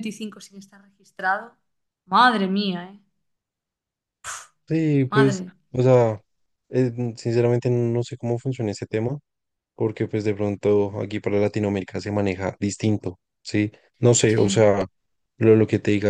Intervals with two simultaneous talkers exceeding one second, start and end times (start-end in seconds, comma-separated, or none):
none